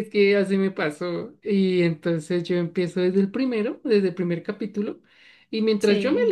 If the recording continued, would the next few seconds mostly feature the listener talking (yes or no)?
no